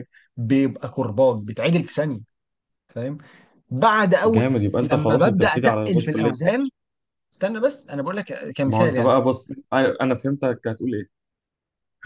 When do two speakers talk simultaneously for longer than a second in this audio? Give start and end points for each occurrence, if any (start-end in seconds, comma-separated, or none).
4.2-6.4